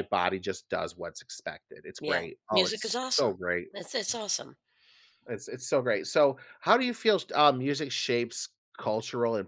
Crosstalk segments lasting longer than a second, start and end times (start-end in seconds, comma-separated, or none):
2.0-3.4